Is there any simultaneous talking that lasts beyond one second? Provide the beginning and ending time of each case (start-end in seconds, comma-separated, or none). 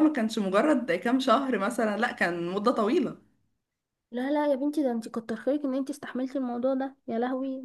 none